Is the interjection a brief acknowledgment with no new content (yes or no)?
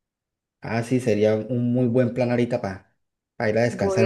no